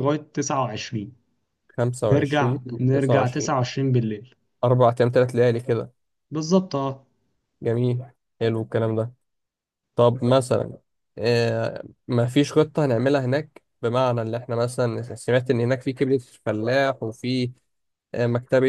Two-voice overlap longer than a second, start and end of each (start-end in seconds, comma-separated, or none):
2.1-3.5